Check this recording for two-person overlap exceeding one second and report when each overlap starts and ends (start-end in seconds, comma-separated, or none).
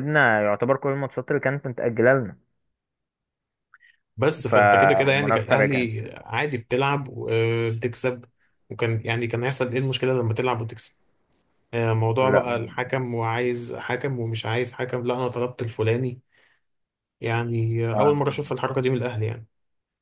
4.5-5.9